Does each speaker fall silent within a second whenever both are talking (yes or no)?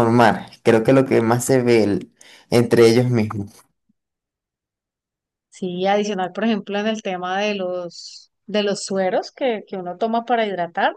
yes